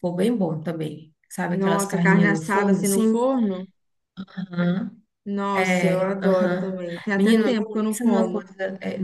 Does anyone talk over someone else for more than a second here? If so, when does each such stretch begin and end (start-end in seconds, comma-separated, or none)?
1.5-3.2, 5.5-8.4